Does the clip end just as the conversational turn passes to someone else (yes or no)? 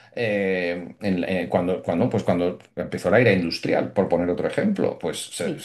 no